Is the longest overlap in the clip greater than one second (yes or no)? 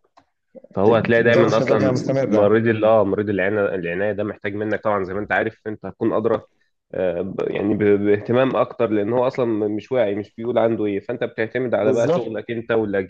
yes